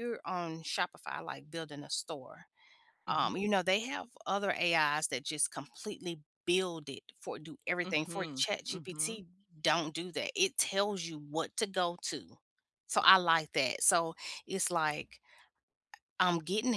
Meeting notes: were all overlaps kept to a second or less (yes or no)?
no